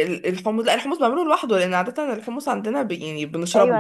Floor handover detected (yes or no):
yes